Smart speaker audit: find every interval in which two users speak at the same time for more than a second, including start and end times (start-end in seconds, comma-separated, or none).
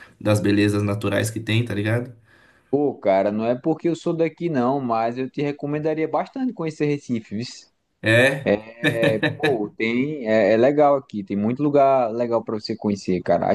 none